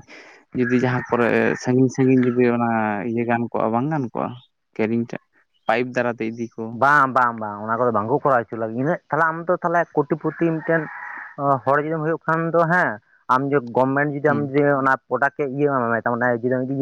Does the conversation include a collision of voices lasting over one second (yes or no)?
no